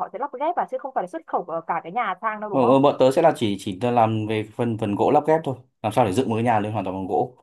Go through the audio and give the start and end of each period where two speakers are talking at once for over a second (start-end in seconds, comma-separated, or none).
none